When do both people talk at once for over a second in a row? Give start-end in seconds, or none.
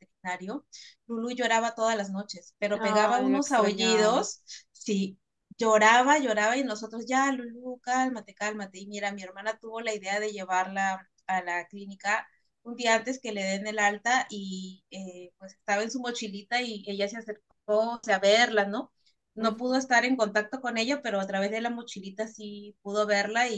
2.7-4.3